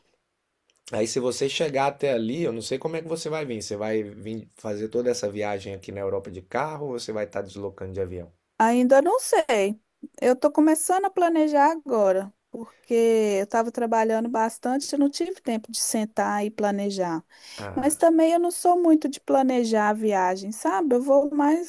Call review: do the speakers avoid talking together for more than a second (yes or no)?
yes